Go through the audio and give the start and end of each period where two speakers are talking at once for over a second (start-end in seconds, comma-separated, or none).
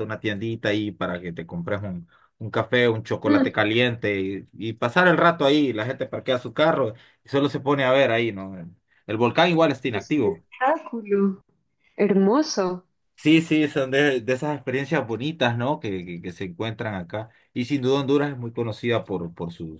none